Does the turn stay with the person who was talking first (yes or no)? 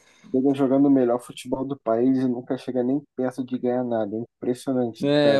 no